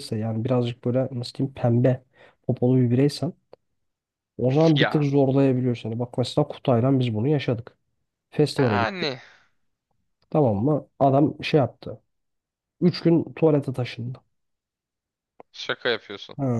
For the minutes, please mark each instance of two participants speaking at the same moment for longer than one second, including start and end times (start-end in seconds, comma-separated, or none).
none